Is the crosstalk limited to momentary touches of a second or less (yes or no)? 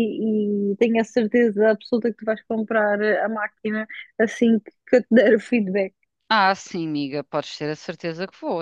yes